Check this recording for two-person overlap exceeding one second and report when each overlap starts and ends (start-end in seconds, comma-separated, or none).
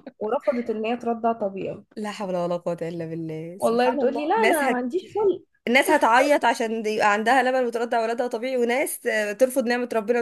3.6-4.8